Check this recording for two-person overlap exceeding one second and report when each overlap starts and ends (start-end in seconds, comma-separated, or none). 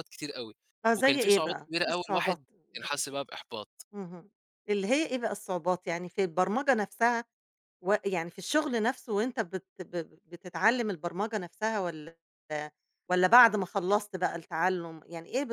1.0-3.1